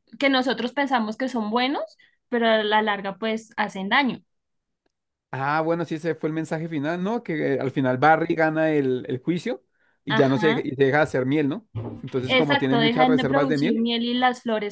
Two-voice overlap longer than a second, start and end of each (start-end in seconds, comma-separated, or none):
12.3-13.8